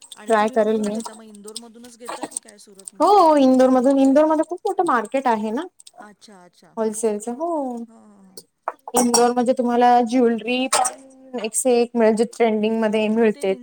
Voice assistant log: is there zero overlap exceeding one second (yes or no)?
yes